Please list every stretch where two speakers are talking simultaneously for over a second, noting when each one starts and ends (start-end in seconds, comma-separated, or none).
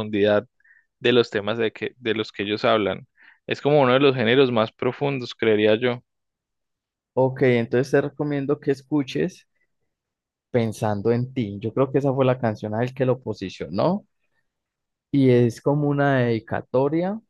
none